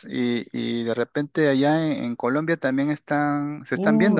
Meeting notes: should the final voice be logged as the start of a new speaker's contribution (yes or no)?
yes